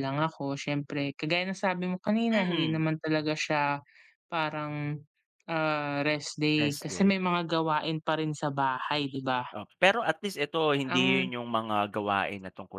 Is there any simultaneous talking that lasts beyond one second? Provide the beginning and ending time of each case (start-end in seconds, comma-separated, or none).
none